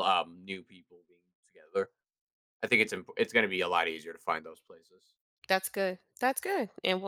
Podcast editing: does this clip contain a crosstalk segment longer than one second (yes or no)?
no